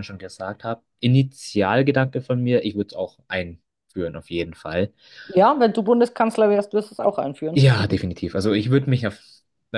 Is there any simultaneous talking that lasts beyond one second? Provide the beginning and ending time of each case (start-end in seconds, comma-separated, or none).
none